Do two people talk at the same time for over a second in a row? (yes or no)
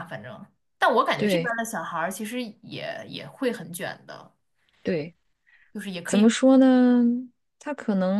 no